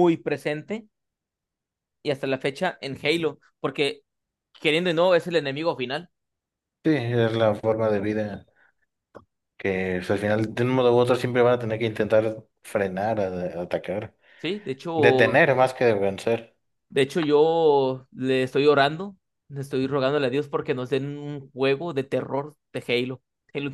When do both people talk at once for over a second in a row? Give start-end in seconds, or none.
none